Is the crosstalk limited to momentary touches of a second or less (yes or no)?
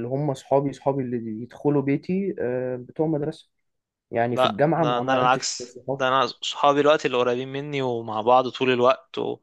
no